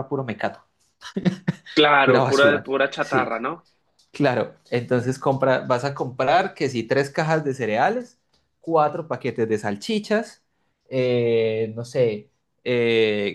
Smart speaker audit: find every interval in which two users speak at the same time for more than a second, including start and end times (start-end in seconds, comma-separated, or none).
2.0-3.4